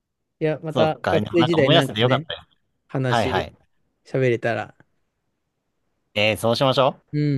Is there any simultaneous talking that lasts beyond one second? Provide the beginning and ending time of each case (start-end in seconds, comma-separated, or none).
0.7-2.3